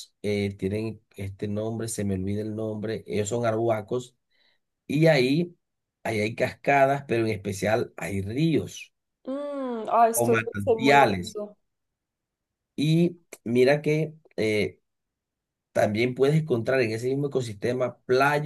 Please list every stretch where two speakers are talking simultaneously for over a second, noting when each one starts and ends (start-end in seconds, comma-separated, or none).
10.1-11.4